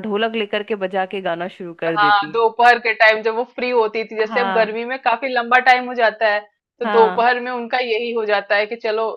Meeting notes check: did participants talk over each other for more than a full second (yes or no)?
no